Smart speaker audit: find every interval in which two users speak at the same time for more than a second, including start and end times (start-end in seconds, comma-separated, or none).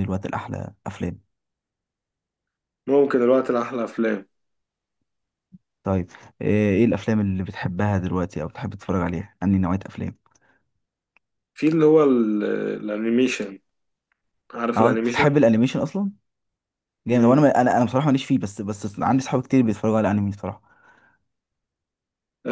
none